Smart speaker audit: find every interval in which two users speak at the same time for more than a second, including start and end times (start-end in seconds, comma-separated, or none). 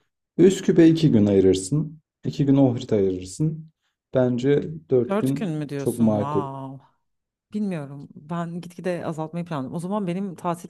5.1-6.4